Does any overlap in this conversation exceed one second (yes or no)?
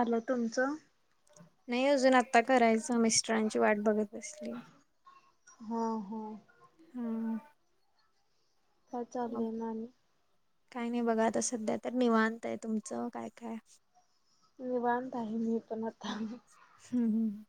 no